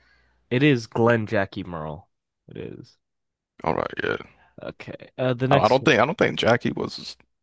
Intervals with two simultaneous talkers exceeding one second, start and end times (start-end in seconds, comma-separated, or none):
none